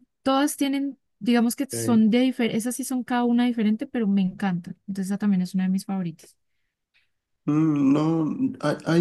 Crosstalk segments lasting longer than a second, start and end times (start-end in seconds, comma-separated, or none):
none